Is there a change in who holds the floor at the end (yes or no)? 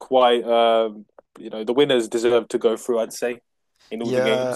yes